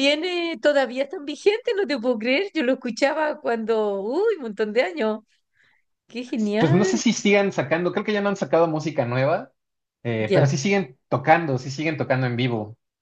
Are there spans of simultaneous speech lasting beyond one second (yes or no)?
no